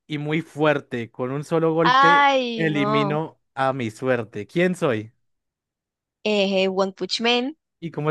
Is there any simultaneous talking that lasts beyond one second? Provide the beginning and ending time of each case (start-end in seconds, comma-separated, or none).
1.8-3.2